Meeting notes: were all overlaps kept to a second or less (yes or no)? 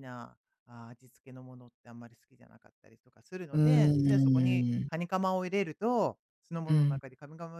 no